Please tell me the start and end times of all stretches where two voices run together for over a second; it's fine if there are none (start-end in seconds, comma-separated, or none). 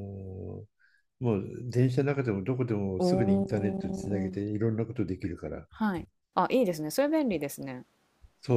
3.0-4.3